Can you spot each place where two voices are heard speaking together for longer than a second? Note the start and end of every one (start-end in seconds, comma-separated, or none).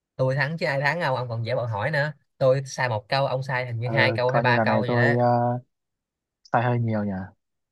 3.8-5.0